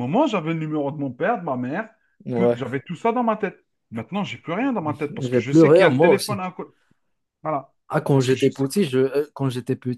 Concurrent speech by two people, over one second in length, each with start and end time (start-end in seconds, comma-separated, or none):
5.1-6.4